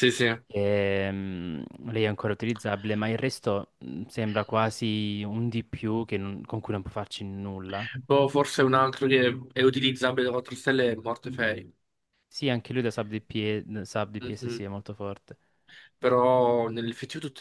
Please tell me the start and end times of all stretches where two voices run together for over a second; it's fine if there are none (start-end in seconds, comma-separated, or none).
none